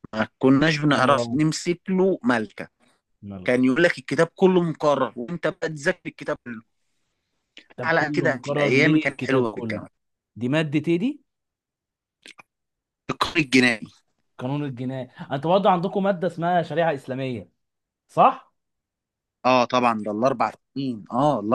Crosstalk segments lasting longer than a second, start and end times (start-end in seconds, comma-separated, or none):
7.8-9.8